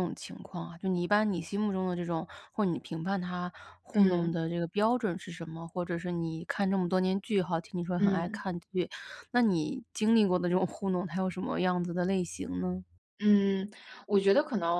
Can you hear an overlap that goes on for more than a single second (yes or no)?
no